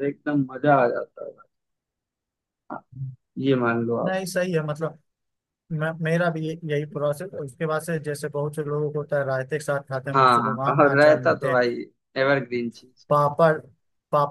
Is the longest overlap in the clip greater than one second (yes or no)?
yes